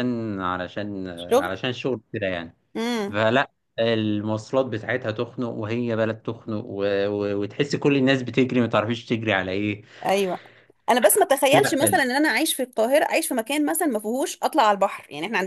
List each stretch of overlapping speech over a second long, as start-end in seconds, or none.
none